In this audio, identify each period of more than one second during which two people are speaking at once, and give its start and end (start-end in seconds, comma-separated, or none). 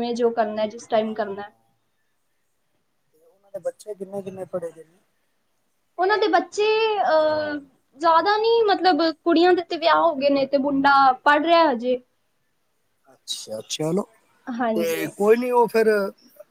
none